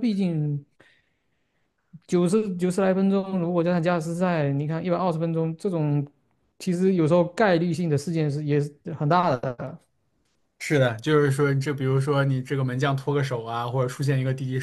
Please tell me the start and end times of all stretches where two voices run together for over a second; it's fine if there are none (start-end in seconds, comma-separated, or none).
none